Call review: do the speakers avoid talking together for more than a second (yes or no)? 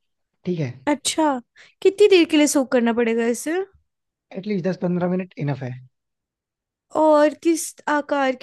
yes